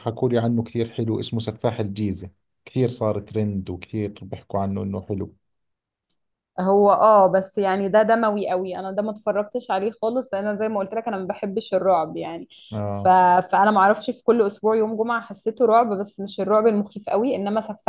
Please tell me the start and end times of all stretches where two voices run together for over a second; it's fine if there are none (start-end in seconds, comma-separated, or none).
none